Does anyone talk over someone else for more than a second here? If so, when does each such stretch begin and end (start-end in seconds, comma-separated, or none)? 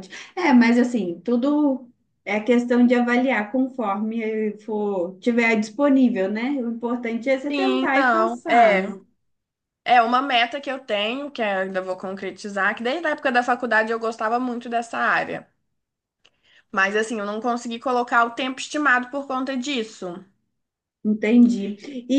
7.5-9.0